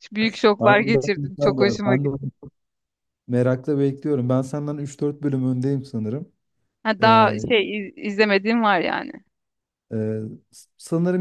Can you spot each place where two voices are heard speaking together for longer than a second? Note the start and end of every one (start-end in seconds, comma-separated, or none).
0.6-2.2